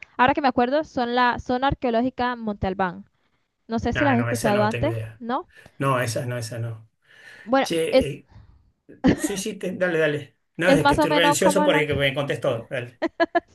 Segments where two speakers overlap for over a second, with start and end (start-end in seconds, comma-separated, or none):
3.9-5.2, 10.6-11.8